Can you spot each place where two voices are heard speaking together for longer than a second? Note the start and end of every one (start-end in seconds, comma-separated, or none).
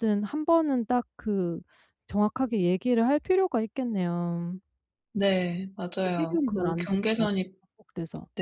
6.0-7.5